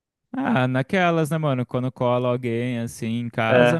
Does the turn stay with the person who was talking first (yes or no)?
yes